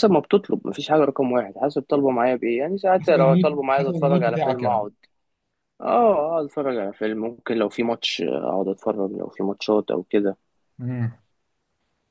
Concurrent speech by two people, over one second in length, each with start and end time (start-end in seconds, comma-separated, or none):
3.0-4.9